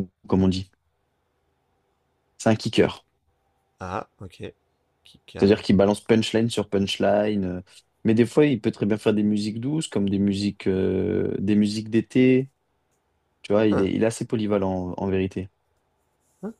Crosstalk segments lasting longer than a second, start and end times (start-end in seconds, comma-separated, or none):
none